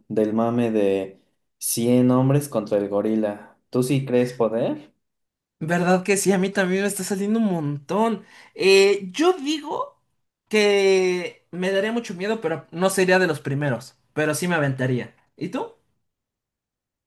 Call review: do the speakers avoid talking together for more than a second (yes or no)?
yes